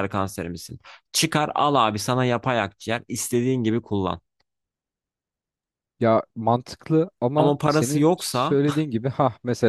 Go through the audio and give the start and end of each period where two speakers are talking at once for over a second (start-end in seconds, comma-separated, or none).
7.4-8.6